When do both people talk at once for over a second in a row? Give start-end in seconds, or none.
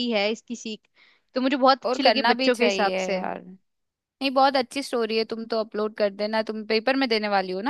1.9-3.2